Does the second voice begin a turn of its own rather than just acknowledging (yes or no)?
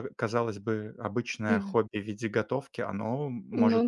yes